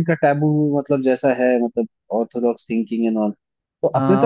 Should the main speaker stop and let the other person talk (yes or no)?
yes